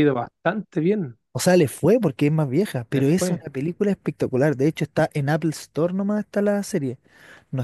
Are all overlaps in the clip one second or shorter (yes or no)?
yes